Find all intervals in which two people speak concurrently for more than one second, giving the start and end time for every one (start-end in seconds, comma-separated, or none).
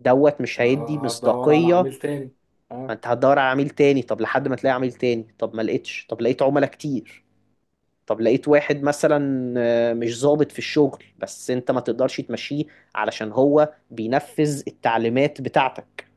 0.6-1.9